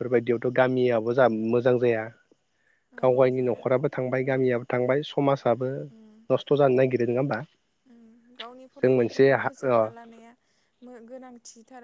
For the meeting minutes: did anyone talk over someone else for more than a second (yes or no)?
no